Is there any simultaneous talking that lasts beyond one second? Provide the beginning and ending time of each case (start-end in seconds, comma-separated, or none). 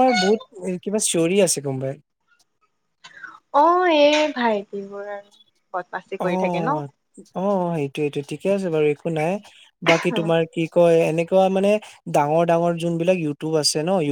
none